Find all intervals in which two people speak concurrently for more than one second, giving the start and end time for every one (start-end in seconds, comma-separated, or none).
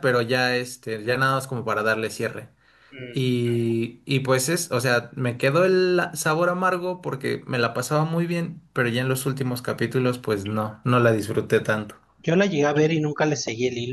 none